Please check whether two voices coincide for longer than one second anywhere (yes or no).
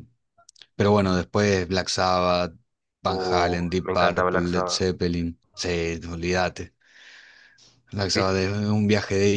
yes